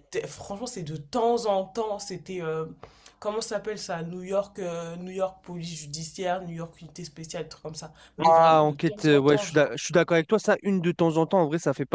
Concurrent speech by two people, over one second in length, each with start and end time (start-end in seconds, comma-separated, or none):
8.2-9.7